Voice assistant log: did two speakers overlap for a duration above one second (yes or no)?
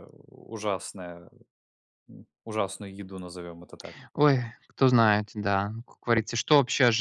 no